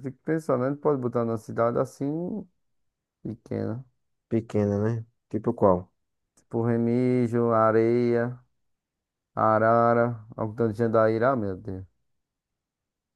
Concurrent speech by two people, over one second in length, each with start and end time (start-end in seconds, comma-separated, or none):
none